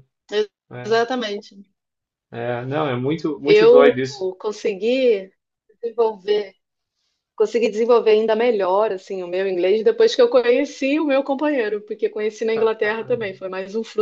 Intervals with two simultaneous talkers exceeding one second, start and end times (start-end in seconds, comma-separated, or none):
none